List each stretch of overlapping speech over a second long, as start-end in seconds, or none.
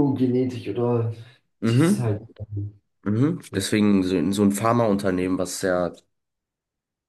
none